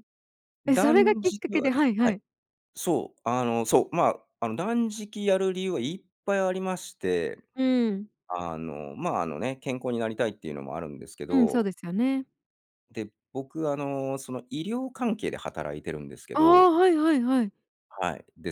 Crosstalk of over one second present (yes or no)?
yes